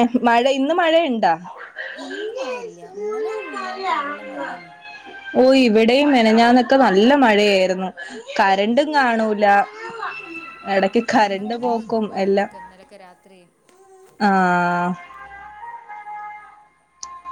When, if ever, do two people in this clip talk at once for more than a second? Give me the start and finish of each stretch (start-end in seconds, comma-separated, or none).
10.8-12.5